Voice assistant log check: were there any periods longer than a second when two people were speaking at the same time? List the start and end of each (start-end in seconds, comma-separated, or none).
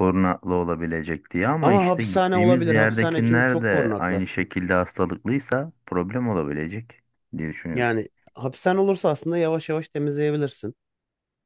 1.6-4.2